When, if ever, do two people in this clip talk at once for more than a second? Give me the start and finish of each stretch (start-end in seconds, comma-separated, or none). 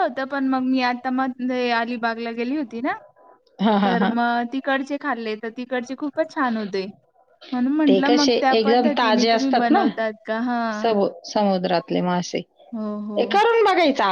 7.9-9.8